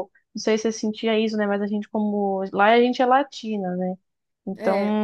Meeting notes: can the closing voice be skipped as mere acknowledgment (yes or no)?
yes